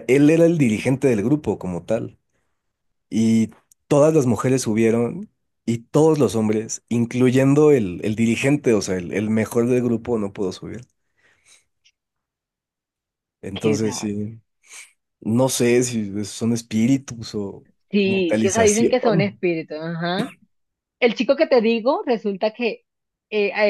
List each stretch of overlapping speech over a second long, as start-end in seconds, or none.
18.0-19.4